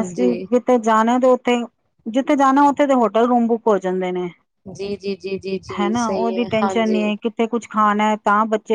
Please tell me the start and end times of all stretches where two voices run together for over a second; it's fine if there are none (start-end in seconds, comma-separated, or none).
none